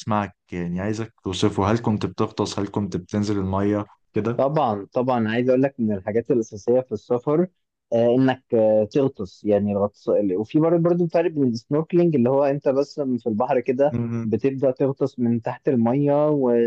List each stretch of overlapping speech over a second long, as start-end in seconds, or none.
none